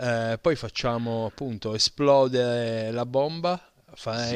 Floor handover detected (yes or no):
yes